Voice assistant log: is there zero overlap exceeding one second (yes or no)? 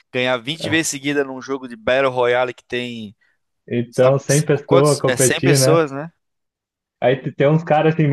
no